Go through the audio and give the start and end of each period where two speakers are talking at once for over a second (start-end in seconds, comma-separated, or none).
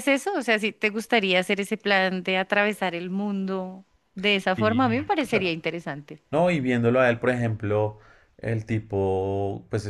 none